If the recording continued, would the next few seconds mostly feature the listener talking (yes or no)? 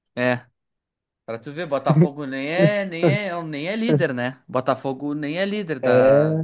no